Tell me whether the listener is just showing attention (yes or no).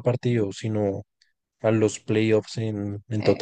no